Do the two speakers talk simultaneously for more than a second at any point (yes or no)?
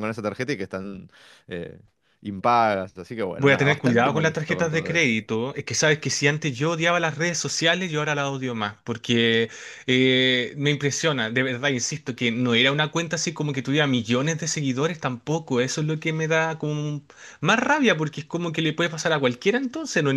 yes